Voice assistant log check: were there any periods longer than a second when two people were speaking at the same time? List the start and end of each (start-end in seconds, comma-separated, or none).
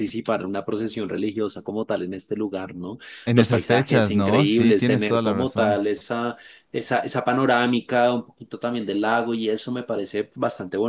3.3-5.8